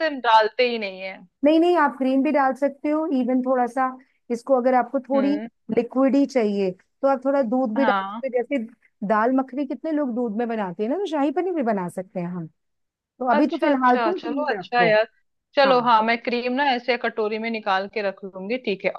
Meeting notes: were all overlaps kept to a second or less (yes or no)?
no